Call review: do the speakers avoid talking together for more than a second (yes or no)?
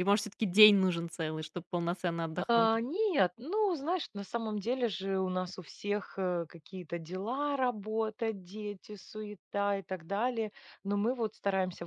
yes